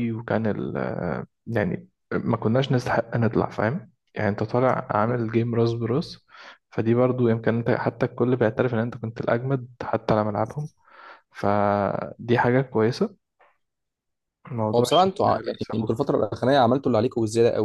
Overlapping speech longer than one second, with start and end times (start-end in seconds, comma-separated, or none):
14.8-16.0